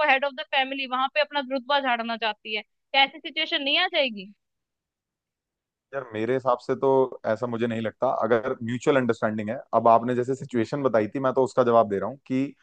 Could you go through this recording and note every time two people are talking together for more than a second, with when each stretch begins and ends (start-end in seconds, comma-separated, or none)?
none